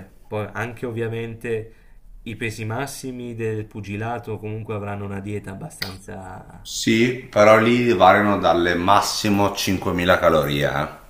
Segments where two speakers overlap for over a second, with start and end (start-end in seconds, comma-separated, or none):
none